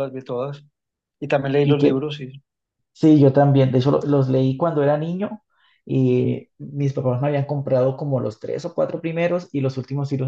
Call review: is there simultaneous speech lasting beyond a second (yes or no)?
no